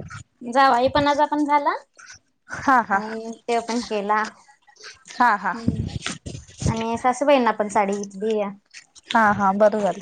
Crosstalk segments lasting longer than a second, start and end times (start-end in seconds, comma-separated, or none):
none